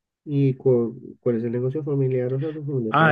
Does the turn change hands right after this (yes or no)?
yes